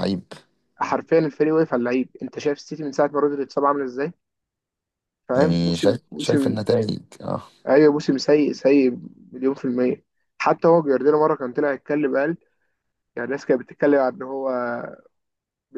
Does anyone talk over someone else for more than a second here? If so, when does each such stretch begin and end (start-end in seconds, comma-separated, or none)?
5.3-6.6